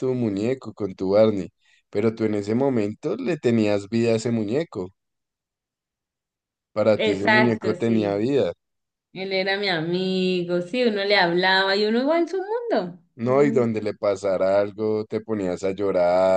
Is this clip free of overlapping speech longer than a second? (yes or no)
no